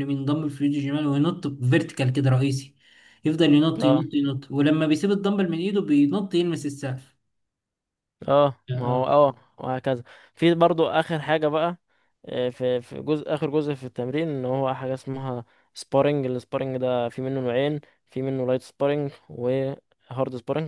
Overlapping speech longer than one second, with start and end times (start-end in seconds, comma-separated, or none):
none